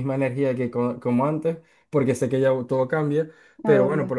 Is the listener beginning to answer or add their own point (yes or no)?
no